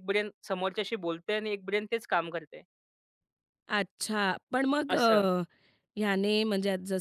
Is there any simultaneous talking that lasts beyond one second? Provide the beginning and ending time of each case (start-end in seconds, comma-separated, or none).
none